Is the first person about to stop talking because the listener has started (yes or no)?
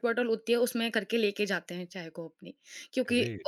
no